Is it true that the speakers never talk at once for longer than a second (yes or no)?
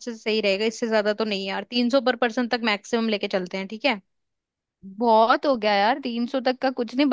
yes